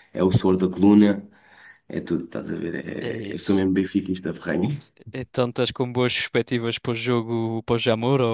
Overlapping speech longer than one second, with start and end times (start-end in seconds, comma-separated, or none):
none